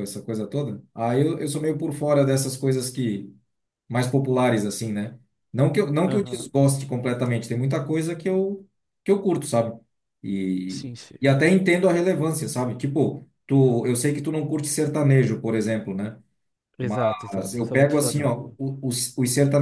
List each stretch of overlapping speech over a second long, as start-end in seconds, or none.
16.8-18.3